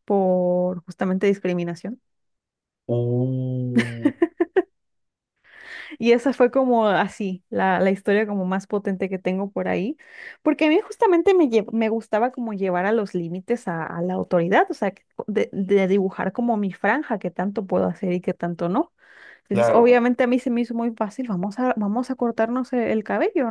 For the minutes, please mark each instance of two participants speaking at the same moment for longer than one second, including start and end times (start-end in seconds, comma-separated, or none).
none